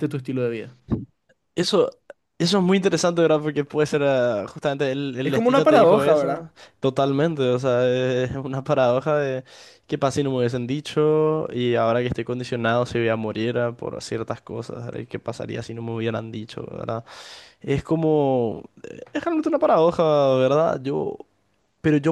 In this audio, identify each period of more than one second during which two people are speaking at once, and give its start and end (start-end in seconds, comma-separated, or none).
5.2-6.5